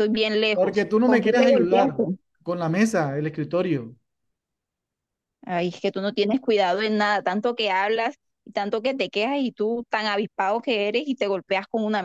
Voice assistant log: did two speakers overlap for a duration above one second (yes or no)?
yes